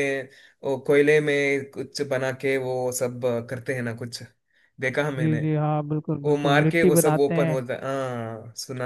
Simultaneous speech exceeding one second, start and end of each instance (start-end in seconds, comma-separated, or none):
6.2-7.6